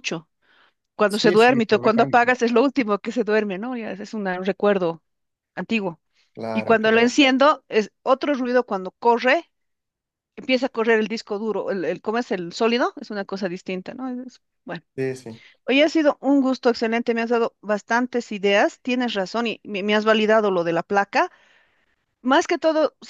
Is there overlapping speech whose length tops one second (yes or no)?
yes